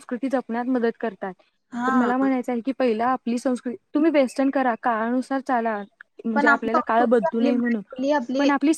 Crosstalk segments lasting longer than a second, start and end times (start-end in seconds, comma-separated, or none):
6.3-7.8